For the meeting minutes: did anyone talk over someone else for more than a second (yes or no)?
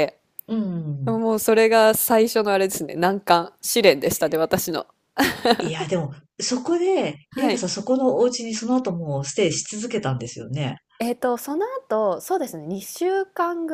no